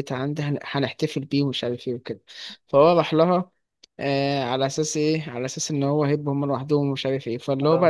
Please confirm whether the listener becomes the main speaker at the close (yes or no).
no